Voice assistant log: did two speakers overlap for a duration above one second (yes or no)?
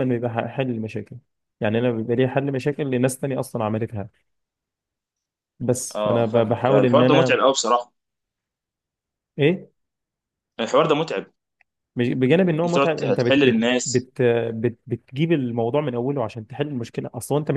yes